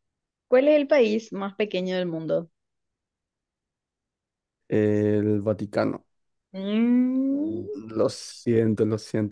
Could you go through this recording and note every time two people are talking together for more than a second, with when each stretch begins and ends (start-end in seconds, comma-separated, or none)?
none